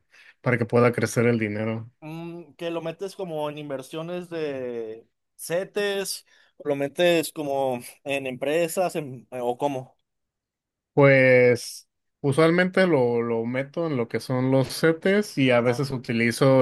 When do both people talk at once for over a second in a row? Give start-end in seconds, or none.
none